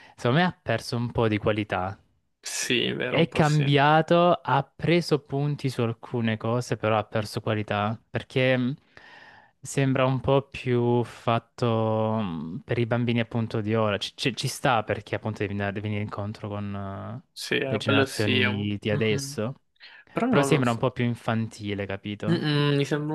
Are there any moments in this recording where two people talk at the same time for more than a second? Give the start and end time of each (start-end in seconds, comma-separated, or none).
17.7-19.4